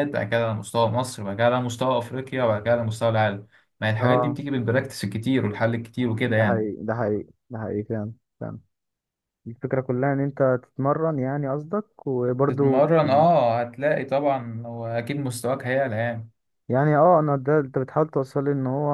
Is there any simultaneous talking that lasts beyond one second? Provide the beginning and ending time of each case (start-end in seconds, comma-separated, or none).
none